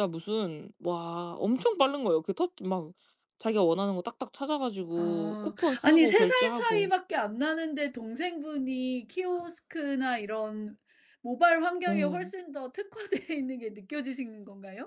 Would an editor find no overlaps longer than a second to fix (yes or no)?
no